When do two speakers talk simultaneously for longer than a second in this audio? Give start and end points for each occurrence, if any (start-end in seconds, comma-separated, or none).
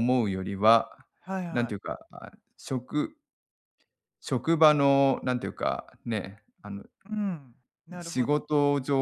none